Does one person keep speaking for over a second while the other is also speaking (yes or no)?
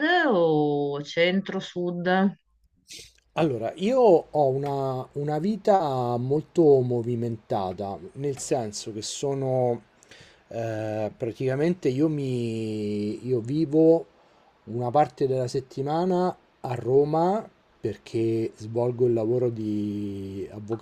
no